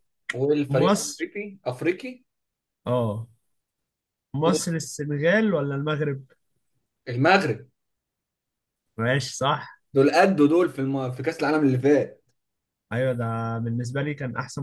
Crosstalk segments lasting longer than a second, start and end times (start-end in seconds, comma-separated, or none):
none